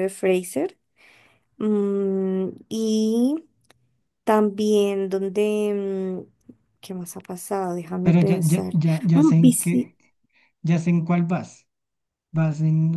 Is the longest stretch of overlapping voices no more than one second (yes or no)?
no